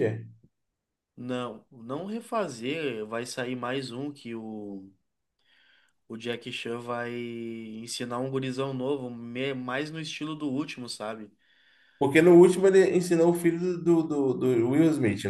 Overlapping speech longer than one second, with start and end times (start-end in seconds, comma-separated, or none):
none